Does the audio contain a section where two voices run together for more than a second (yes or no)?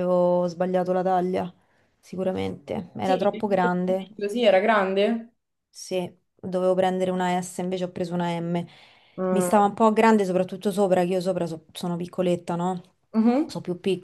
no